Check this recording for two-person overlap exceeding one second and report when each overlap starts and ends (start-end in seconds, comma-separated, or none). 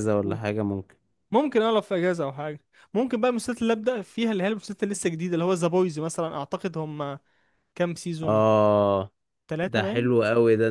none